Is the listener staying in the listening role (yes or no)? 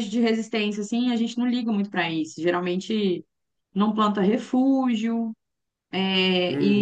no